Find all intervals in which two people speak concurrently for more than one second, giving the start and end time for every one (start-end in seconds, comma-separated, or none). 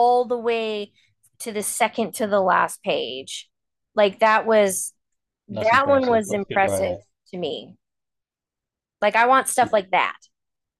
5.5-6.9